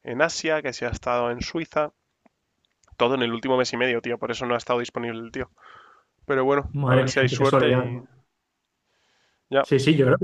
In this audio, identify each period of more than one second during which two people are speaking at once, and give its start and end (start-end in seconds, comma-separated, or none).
6.7-8.0